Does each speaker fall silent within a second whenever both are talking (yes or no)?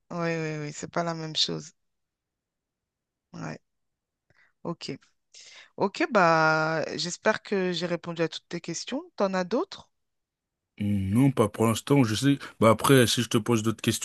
yes